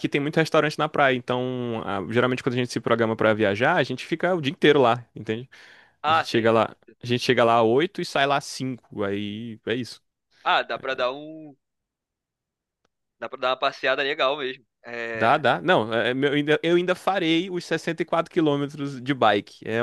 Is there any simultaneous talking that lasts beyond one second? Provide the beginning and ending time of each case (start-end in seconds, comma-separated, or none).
none